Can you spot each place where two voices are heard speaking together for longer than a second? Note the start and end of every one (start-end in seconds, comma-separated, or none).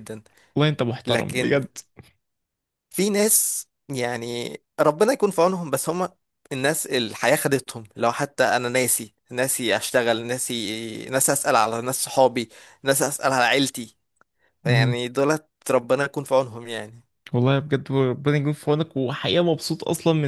none